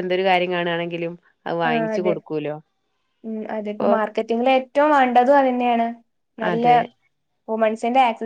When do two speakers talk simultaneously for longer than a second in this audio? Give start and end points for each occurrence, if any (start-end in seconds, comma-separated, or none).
none